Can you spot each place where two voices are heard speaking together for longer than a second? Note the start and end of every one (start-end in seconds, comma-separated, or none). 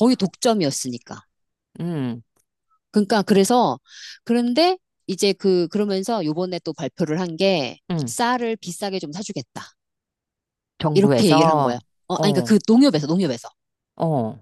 10.9-12.6